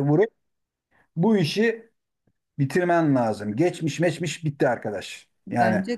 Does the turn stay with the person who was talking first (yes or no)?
yes